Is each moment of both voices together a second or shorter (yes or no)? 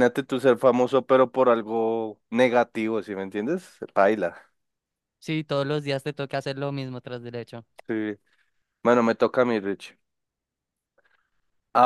yes